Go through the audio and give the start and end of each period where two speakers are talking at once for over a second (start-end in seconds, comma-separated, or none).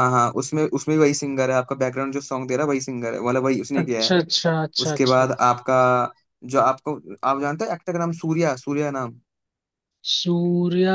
none